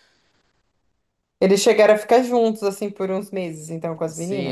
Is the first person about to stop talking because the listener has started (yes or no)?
yes